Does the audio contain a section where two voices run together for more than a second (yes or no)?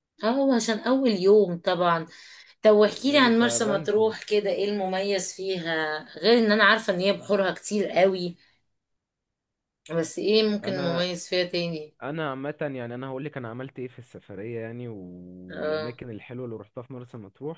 yes